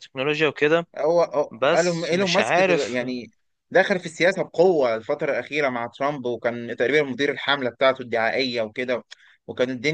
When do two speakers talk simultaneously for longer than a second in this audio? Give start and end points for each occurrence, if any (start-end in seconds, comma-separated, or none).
1.5-3.0